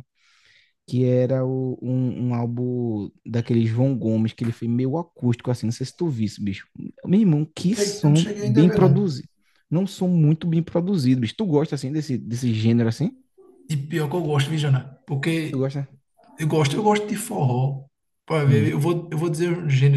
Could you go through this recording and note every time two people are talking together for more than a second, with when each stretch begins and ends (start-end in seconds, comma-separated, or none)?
7.7-9.2